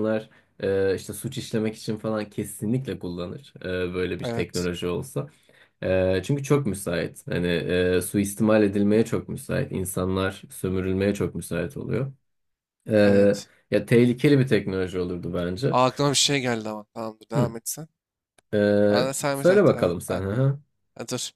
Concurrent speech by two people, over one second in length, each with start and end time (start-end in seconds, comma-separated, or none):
18.9-20.4